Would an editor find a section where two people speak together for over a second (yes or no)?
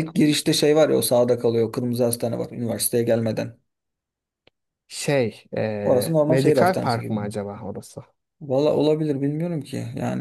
yes